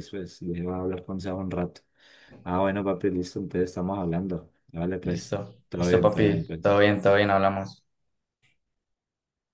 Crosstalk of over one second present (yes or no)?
yes